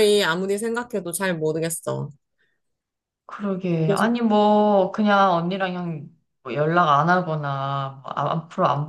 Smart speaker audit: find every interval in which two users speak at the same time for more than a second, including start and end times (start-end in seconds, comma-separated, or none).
none